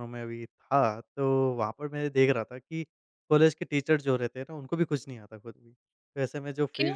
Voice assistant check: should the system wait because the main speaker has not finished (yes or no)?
yes